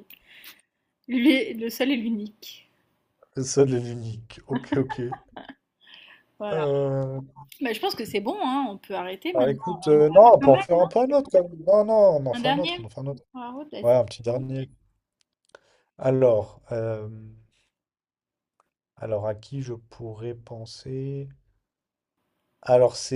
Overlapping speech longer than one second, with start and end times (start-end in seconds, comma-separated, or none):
9.3-10.9